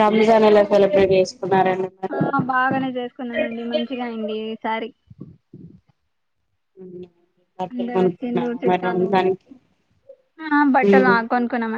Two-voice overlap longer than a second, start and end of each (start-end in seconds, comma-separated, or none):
7.7-9.1